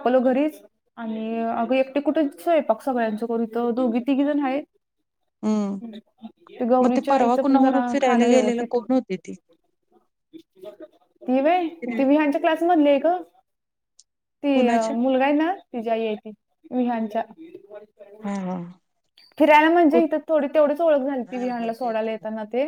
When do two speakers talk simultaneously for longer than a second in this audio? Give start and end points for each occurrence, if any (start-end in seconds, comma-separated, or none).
6.8-8.7